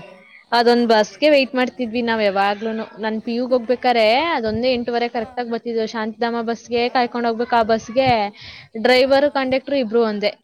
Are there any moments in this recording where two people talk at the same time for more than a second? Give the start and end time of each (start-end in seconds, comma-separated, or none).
0.7-2.3